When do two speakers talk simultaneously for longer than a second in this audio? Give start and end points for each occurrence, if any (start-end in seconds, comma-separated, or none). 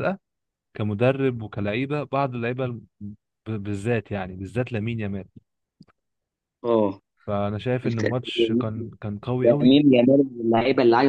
none